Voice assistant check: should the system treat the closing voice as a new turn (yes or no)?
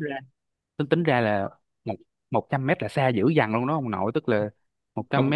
no